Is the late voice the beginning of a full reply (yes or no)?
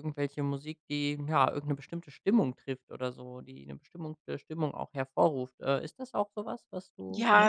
yes